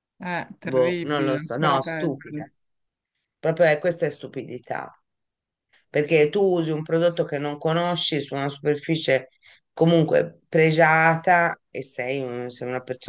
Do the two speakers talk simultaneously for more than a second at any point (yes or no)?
yes